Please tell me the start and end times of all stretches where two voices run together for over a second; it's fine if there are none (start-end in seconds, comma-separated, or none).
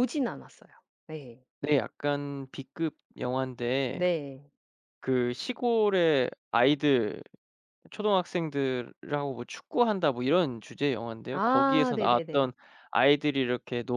11.3-12.5